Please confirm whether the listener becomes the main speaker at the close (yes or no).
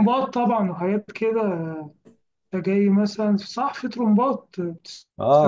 yes